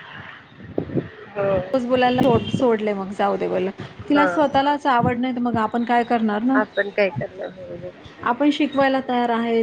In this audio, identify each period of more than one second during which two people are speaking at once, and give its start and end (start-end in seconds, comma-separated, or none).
none